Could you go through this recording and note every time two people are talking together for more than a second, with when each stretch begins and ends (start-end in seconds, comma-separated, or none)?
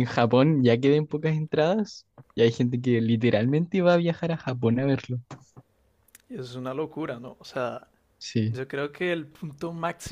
none